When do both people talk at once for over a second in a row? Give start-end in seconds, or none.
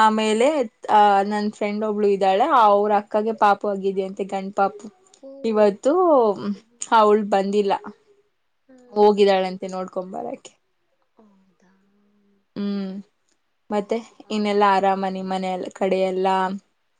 14.4-16.2